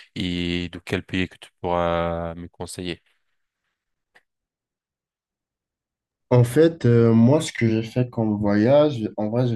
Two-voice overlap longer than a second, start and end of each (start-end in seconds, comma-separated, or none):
none